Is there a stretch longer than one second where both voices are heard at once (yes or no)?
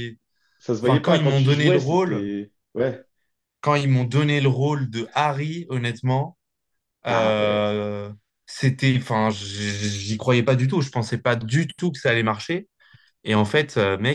yes